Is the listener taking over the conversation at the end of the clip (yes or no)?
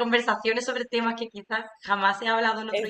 yes